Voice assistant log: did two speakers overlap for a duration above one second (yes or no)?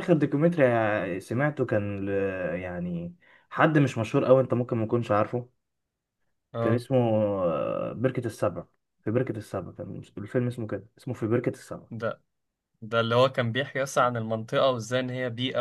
no